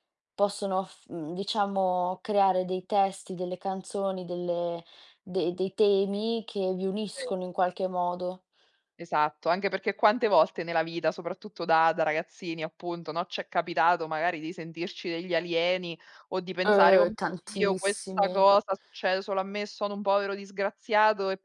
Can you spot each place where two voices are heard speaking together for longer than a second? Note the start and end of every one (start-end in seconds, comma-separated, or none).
16.7-18.4